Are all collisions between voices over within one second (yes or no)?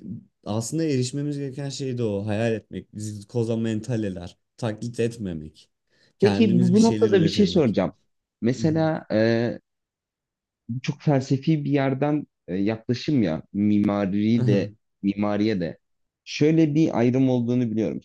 no